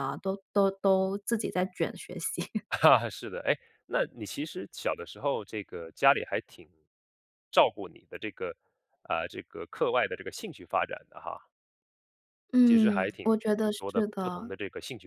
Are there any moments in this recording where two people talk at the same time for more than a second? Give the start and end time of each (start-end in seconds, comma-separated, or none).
12.7-14.5